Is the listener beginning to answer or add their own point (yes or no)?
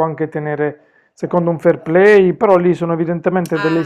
no